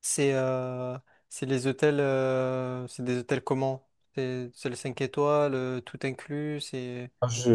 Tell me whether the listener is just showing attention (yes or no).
no